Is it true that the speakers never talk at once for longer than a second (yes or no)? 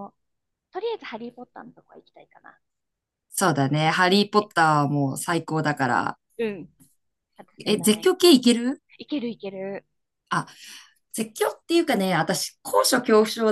yes